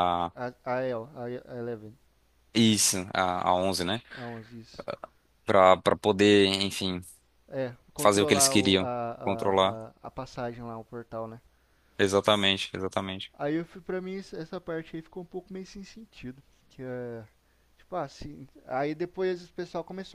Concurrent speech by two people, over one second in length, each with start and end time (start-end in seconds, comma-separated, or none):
8.0-9.8